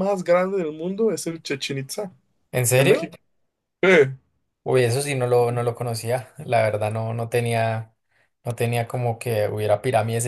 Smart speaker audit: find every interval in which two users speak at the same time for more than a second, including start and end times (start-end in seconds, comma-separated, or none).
none